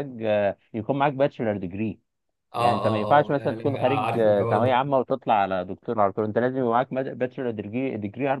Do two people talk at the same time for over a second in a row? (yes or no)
yes